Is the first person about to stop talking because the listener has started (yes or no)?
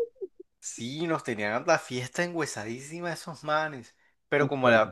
no